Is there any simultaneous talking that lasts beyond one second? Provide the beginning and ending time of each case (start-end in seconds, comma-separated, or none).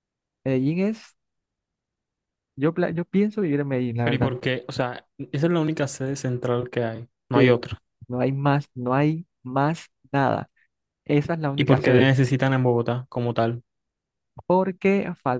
none